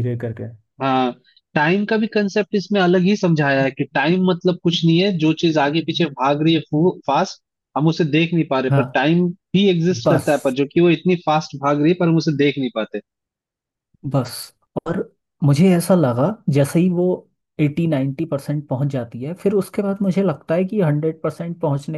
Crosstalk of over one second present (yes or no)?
no